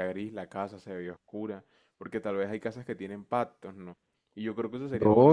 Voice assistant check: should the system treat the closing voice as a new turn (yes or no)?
yes